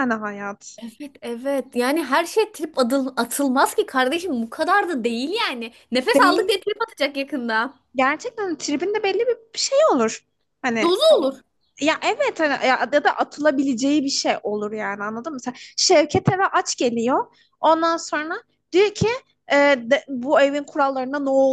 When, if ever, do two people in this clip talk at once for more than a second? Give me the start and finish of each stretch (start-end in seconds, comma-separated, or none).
none